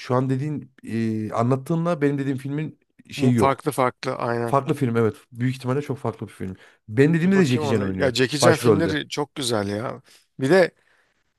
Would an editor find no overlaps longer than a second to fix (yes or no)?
no